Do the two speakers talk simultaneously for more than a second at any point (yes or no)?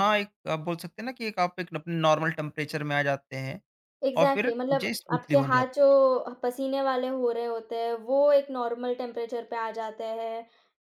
yes